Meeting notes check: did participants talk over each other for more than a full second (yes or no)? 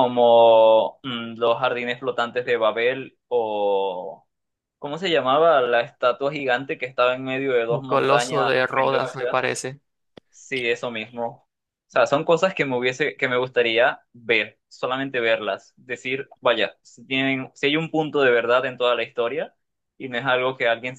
yes